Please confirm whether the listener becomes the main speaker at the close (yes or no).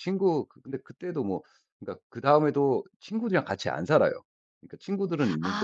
yes